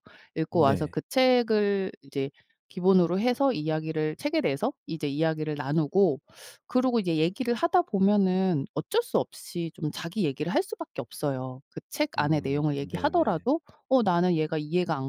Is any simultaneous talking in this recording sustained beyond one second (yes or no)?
yes